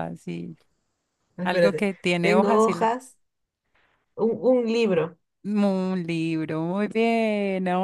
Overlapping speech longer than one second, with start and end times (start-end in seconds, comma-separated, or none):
1.4-2.9